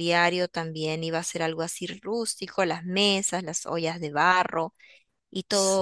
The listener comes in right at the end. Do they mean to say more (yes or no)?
no